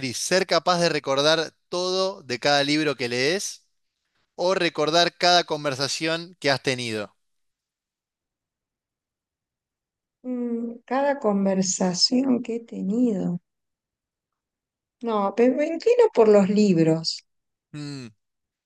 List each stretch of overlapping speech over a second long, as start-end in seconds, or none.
none